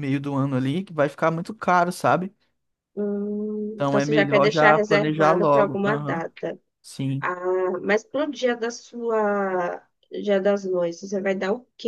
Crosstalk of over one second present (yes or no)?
yes